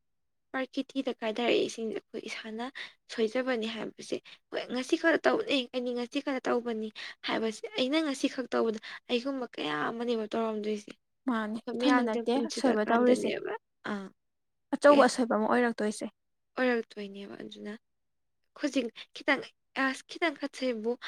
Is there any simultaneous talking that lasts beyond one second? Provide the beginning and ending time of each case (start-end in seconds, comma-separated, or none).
11.5-13.3